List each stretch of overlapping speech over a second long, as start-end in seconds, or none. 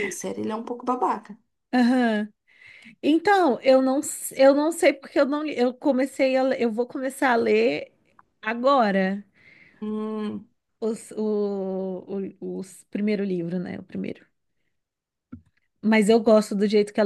none